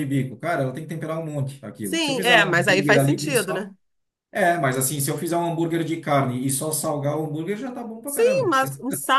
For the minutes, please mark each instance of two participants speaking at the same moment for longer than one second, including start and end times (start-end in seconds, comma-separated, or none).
1.8-3.7